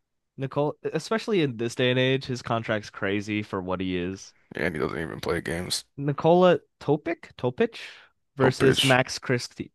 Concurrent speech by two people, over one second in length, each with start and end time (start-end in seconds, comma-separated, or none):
none